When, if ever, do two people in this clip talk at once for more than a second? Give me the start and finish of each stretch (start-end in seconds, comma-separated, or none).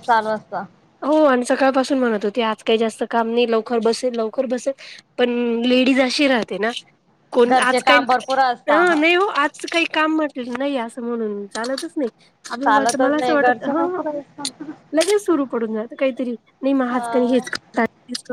12.6-14.0